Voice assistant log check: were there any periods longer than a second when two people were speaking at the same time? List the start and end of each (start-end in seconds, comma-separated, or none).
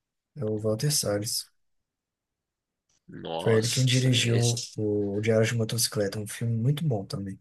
3.4-4.8